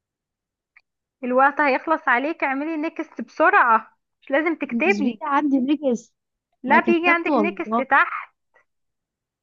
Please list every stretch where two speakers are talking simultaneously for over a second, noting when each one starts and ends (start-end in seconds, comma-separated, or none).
6.7-7.8